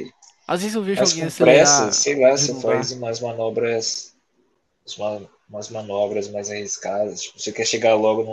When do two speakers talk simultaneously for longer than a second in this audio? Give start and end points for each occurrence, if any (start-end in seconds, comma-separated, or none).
0.9-3.0